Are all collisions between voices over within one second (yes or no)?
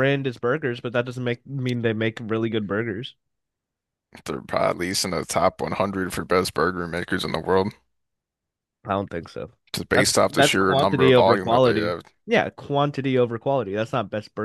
no